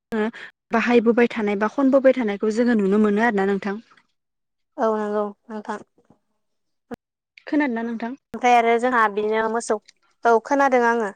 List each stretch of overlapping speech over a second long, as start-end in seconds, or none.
none